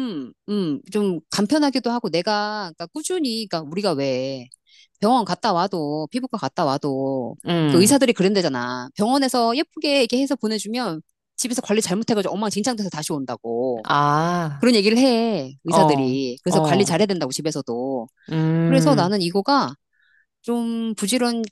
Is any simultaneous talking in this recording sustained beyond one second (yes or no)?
yes